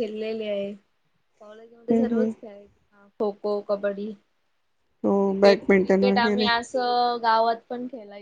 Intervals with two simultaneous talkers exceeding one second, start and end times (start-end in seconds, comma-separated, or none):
5.2-6.5